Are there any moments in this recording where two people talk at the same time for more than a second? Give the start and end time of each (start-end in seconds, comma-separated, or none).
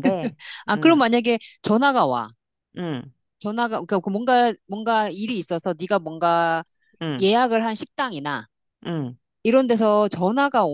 none